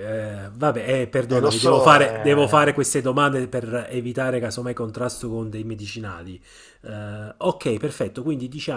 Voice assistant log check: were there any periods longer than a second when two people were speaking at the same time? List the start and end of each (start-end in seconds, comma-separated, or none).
1.3-2.8